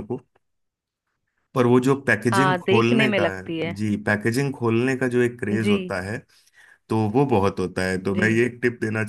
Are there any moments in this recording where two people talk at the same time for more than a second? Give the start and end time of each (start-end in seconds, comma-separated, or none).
2.3-3.8